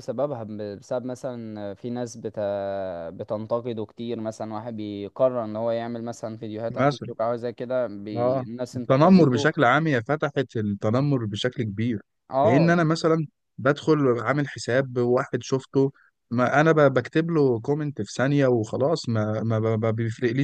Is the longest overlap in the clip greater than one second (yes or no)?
yes